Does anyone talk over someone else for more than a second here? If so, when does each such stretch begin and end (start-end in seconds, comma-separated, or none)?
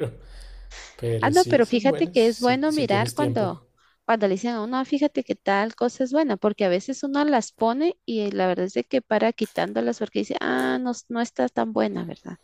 1.2-3.5